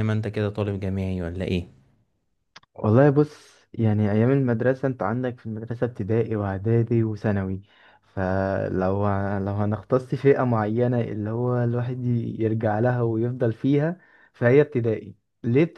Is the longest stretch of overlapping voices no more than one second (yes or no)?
yes